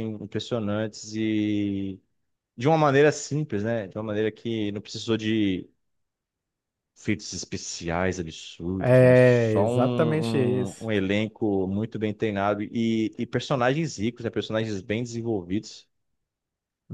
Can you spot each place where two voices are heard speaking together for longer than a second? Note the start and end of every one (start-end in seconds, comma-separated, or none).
8.8-10.9